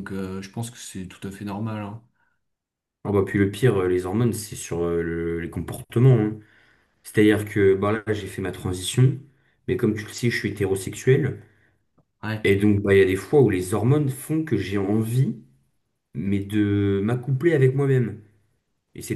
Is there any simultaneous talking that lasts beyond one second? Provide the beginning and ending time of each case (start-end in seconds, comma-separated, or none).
none